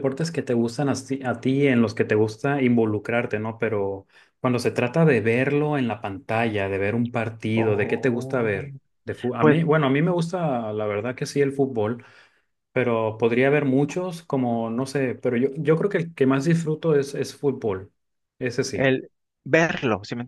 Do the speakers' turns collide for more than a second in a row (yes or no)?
yes